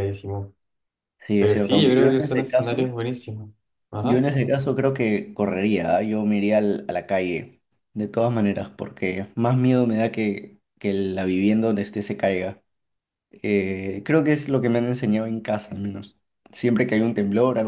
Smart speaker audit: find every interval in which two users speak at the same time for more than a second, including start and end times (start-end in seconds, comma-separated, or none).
1.4-3.0